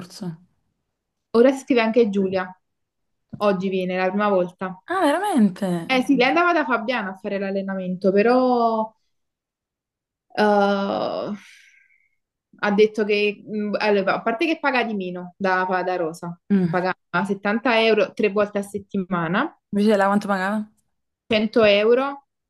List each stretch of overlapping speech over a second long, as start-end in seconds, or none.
none